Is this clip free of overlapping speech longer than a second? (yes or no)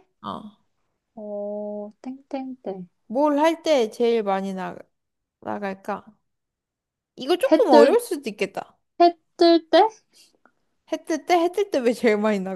yes